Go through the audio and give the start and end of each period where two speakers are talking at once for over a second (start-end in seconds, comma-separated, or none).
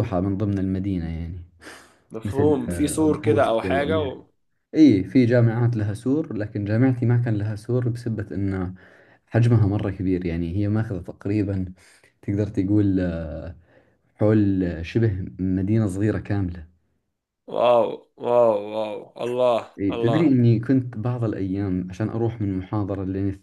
2.2-4.2